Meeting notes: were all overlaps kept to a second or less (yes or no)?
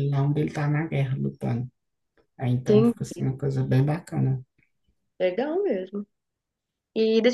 yes